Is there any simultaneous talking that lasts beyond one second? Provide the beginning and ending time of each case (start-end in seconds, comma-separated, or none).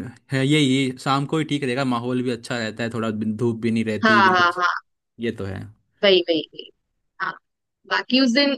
none